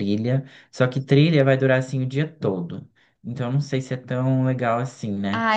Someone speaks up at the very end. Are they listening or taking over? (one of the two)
taking over